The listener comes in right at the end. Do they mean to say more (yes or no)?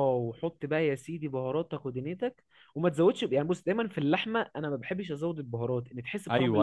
yes